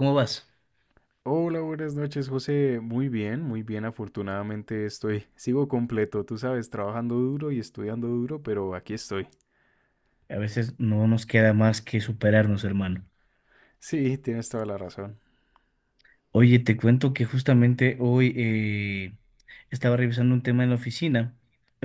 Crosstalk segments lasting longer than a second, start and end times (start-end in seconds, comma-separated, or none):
none